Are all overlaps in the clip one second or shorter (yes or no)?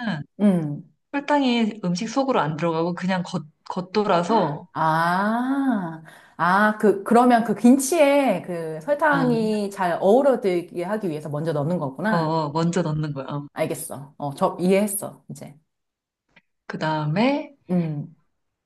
yes